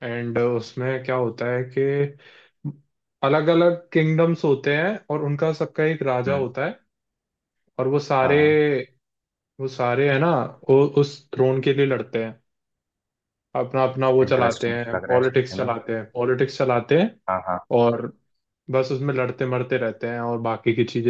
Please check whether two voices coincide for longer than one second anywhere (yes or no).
yes